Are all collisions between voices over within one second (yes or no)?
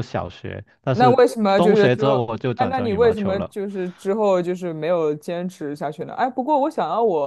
no